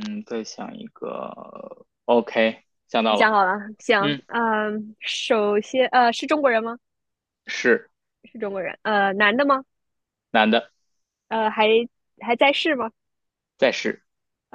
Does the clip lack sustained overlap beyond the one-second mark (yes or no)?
yes